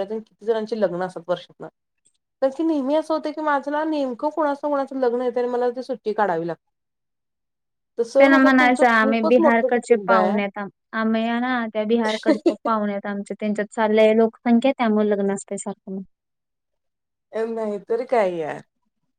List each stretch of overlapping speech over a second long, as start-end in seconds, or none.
8.2-10.4